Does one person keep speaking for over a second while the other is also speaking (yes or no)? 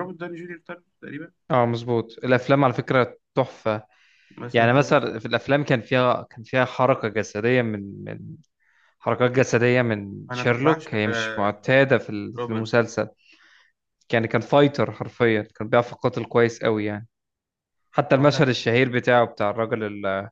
yes